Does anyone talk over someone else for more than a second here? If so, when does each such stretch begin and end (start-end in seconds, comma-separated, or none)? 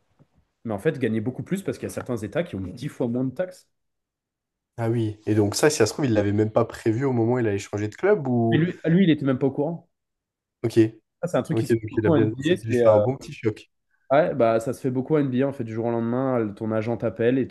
11.5-13.0